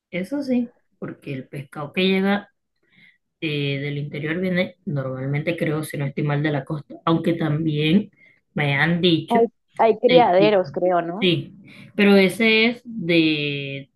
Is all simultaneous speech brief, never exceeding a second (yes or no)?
yes